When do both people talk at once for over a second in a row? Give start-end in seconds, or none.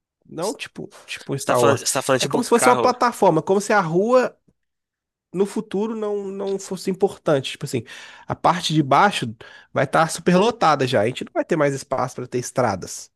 1.4-2.9